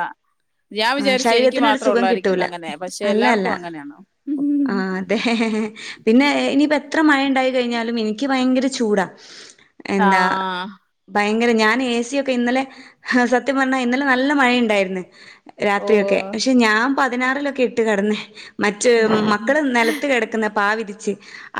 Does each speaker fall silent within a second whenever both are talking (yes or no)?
no